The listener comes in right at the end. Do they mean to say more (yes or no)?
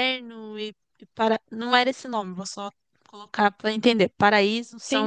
no